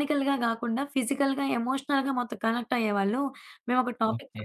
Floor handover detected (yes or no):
no